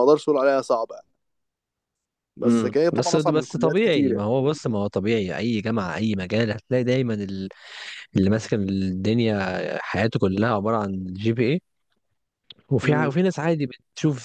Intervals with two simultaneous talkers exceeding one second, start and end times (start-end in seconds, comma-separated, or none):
2.4-4.2